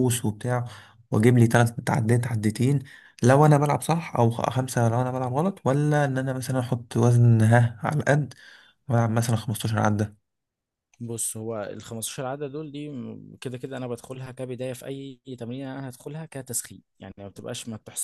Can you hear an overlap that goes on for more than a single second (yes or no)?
no